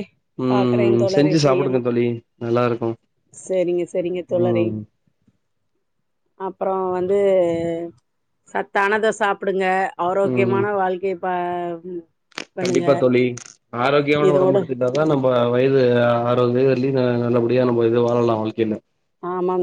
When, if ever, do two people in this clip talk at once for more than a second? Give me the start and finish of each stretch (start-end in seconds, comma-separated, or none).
0.5-1.9